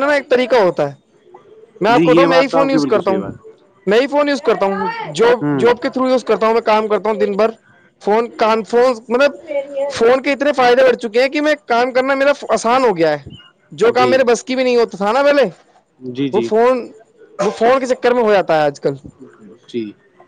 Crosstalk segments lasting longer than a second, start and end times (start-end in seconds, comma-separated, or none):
1.9-3.3